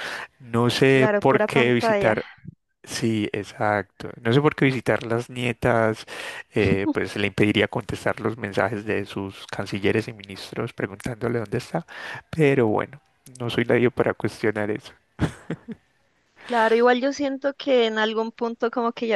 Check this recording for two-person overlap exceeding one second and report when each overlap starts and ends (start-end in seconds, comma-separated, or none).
0.9-2.2